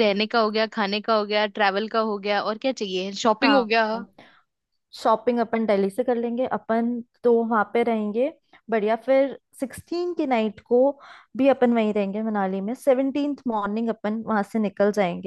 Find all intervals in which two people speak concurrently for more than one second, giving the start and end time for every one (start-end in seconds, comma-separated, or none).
none